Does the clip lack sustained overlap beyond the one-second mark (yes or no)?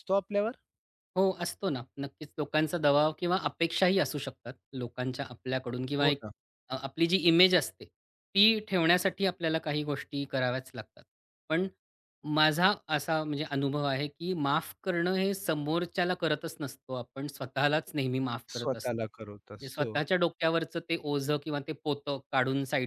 no